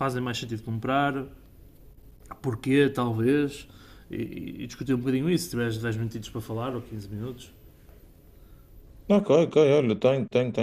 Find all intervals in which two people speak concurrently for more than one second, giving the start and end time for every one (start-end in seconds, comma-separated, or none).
none